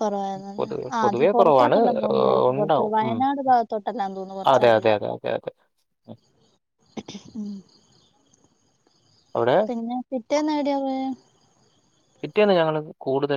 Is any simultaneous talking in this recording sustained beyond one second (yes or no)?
yes